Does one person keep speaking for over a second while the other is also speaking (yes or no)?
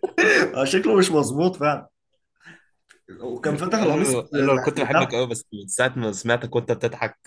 yes